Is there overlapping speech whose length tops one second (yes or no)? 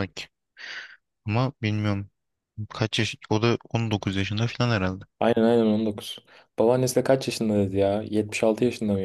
no